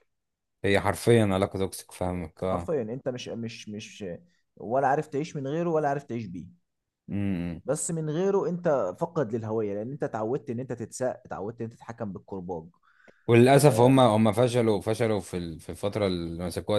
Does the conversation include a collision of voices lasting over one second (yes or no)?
no